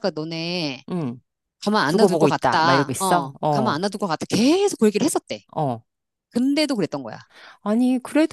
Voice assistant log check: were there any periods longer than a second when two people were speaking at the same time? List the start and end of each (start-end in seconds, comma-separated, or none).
1.9-3.8